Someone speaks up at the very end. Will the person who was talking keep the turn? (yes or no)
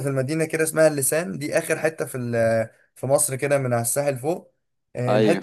yes